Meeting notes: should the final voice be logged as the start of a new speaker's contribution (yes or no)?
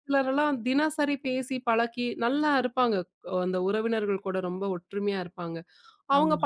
no